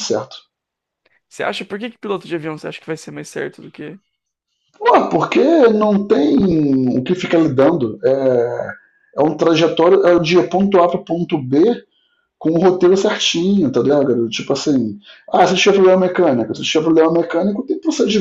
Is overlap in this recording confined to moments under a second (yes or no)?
yes